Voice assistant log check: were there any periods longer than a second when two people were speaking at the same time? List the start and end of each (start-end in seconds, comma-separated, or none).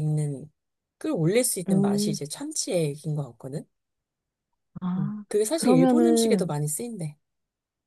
5.0-6.5